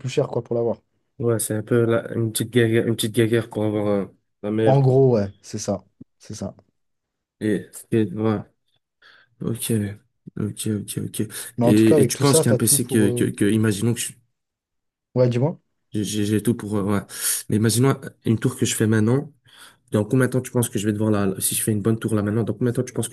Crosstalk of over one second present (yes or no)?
yes